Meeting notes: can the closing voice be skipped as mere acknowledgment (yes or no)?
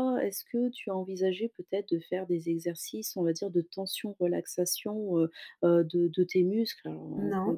yes